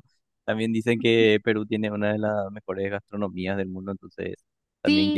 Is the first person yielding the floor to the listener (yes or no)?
yes